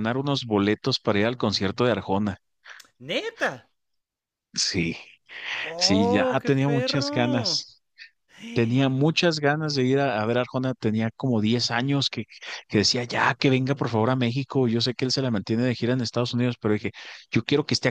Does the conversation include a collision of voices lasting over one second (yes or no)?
yes